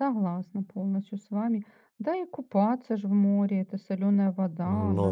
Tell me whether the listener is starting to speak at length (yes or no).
no